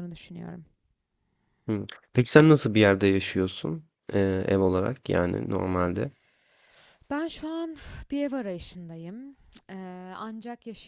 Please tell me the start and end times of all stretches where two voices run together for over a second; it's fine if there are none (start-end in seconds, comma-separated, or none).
none